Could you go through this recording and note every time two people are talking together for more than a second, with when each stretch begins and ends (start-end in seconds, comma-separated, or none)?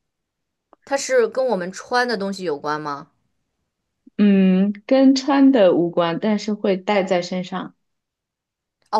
none